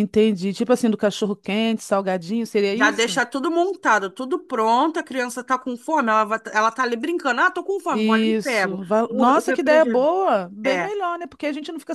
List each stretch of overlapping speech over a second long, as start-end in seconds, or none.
7.9-10.1